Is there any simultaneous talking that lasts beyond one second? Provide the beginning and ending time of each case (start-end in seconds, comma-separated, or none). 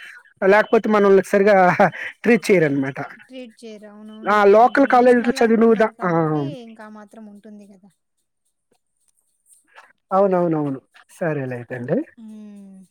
4.3-6.1